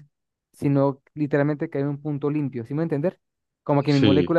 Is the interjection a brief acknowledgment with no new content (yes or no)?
yes